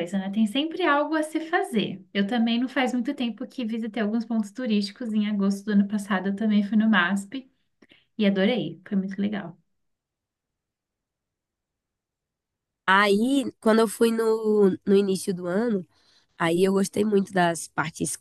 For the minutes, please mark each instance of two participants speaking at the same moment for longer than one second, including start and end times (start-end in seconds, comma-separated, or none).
none